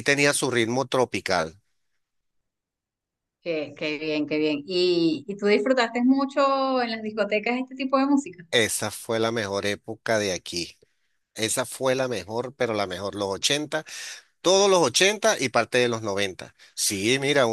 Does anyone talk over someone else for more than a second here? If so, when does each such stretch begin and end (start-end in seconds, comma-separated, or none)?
none